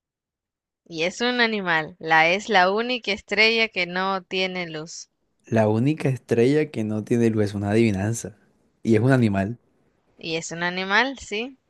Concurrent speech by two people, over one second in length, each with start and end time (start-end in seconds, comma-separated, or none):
none